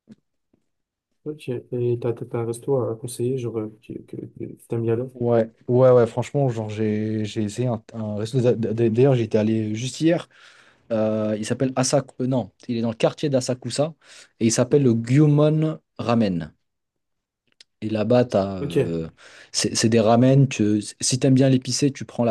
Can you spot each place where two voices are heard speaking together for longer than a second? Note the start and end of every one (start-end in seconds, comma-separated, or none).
none